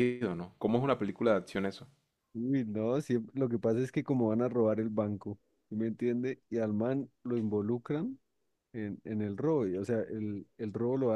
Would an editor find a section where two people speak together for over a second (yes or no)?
no